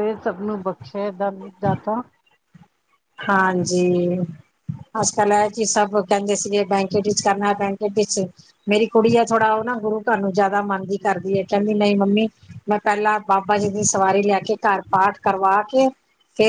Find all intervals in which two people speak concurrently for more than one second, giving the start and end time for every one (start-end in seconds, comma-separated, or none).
none